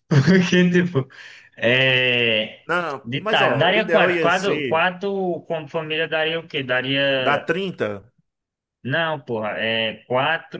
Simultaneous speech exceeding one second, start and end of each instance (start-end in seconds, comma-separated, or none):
3.0-4.8